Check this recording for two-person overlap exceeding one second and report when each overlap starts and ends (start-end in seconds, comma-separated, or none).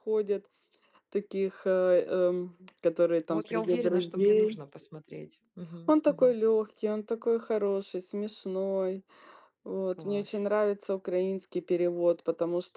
3.3-4.6